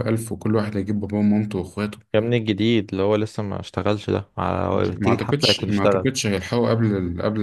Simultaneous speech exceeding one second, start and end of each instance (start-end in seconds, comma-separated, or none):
4.7-6.1